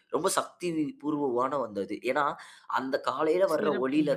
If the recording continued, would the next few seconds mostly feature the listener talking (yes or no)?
no